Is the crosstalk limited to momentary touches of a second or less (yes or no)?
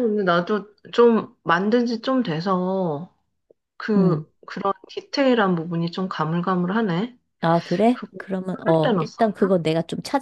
no